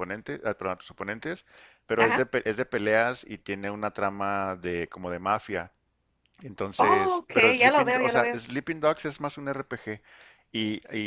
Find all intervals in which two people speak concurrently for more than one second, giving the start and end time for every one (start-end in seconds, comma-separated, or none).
6.8-8.4